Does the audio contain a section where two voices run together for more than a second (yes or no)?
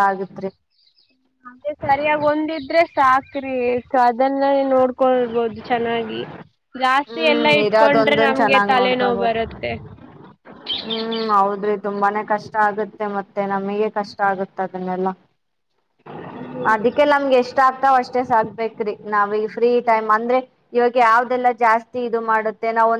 yes